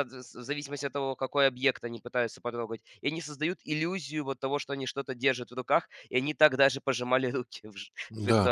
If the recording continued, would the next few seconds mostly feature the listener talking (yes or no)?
yes